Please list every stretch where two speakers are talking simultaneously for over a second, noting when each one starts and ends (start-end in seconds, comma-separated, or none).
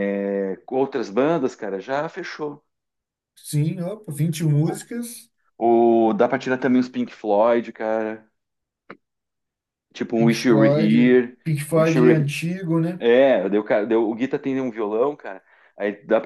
10.2-12.3